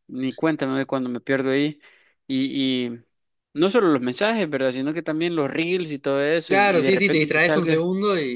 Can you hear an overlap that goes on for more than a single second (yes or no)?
yes